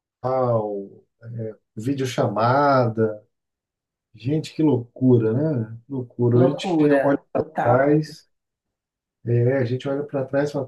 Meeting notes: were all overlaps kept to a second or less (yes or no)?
no